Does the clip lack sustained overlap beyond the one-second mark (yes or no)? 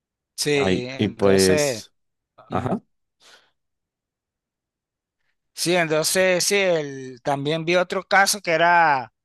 no